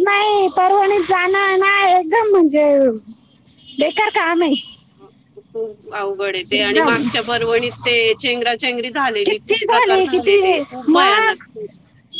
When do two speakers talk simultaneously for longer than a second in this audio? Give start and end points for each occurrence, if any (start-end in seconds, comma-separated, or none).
9.2-11.4